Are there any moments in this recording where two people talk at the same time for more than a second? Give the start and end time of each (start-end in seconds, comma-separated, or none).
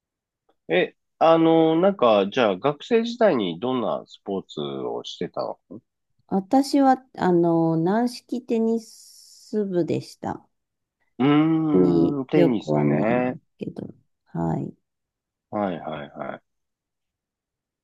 11.7-13.4